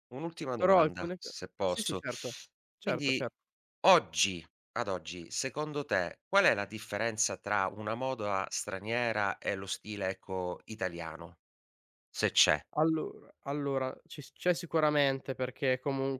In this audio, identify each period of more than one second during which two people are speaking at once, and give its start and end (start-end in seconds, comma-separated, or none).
0.6-2.0